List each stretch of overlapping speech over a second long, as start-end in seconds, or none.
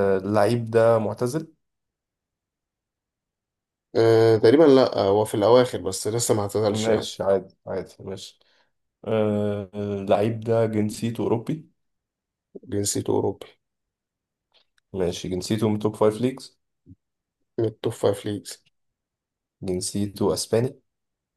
none